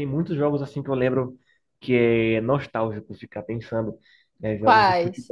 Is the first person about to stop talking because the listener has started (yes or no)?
no